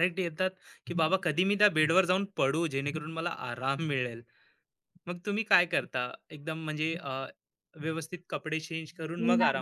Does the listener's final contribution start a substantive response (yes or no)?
yes